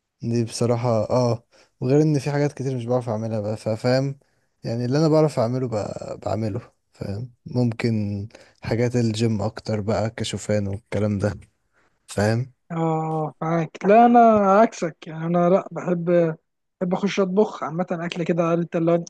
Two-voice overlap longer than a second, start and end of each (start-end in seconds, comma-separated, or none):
none